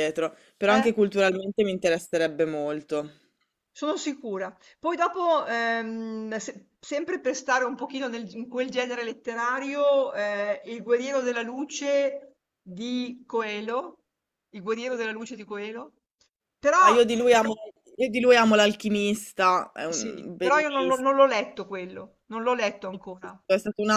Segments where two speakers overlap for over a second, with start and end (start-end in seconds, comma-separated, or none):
19.9-21.1